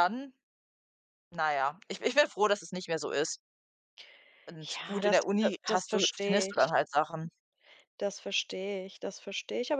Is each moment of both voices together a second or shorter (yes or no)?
no